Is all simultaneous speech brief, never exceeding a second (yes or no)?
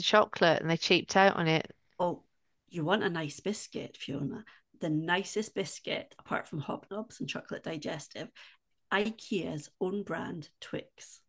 yes